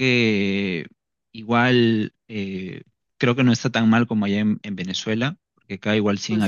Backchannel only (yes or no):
yes